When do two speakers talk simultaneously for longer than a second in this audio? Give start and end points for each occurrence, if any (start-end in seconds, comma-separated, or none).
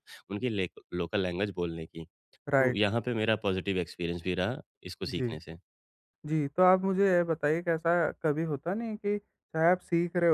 none